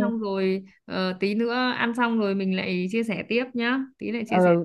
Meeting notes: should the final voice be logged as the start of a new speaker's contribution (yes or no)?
yes